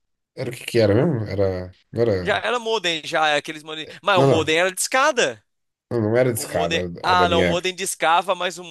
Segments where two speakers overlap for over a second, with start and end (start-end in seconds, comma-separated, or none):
6.3-7.7